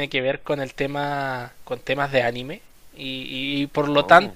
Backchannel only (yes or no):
yes